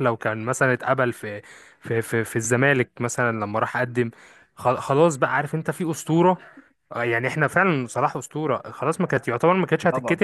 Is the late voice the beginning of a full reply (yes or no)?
no